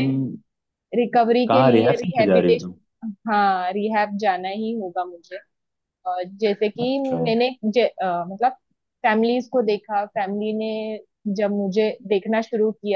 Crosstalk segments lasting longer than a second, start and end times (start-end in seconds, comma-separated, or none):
1.5-2.7